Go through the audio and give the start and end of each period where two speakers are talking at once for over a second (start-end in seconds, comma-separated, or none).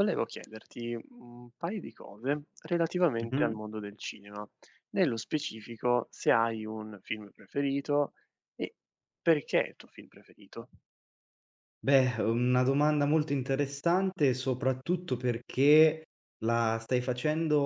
none